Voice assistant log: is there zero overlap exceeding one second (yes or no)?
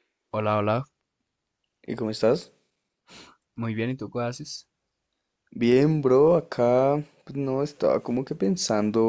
yes